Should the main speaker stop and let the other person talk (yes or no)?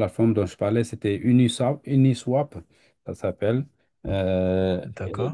yes